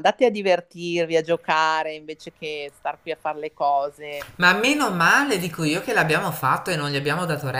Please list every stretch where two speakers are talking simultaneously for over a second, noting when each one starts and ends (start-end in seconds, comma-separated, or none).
none